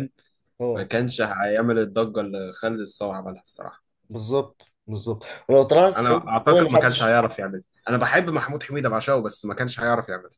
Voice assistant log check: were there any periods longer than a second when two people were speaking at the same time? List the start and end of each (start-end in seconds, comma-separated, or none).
6.0-7.2